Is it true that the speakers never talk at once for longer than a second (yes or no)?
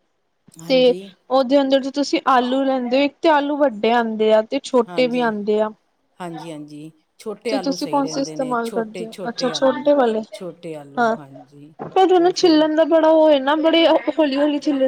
no